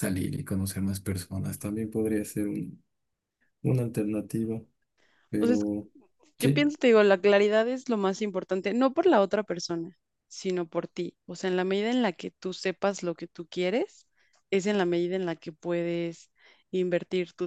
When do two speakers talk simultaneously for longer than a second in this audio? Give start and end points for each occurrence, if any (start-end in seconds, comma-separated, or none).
none